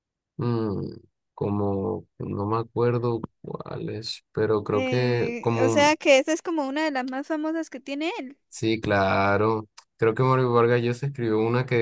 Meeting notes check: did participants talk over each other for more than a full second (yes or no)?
yes